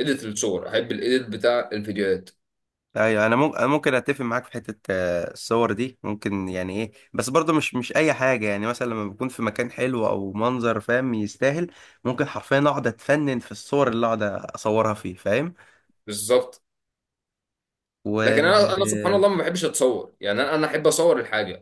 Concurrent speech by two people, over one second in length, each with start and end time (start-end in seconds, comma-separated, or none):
none